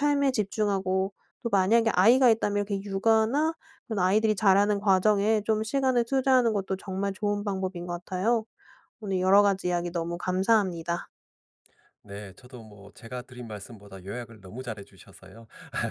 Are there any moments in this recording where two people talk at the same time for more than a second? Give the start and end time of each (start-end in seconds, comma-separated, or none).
none